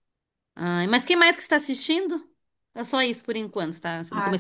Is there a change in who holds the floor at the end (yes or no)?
yes